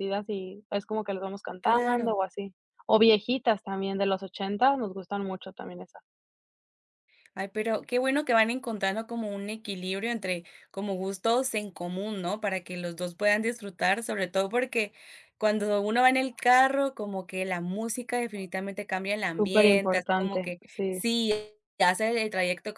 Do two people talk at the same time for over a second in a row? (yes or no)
yes